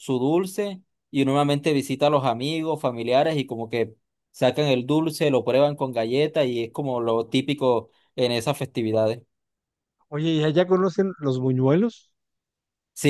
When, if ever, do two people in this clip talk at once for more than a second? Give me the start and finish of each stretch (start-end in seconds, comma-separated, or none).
none